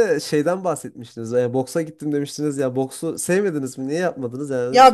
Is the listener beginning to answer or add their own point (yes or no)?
yes